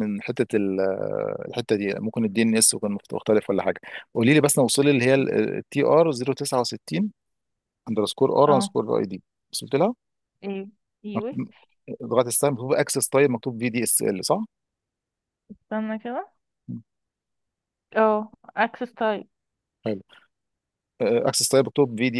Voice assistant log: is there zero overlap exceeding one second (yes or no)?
yes